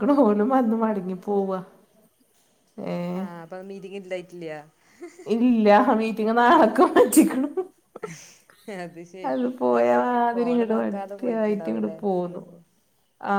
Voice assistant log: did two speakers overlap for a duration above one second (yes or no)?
no